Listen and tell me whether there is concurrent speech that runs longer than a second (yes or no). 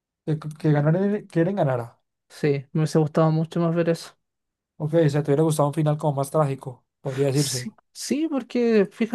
no